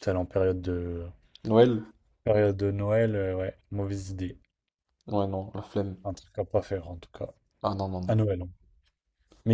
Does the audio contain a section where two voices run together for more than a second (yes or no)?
no